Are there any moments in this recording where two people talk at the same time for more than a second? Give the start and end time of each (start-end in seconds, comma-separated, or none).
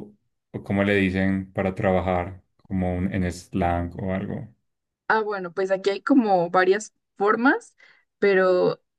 none